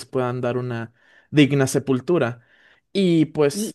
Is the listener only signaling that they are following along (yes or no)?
no